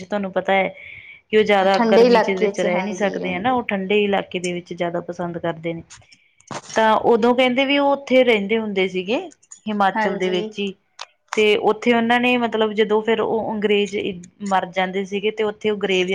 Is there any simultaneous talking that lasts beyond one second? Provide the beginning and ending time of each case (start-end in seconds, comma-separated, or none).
1.7-3.6